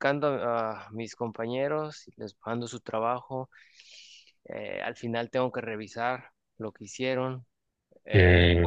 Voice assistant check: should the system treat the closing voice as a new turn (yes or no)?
no